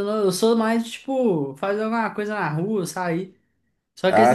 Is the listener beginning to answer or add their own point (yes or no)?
no